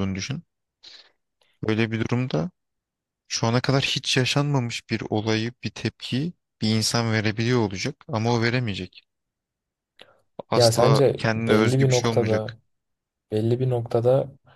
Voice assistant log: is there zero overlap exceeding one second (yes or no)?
no